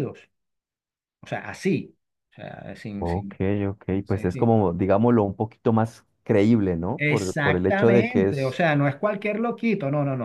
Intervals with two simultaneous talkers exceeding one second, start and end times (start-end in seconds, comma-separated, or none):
7.0-8.6